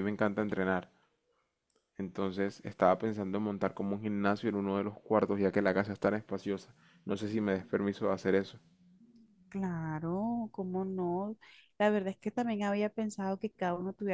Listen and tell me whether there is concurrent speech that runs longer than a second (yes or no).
no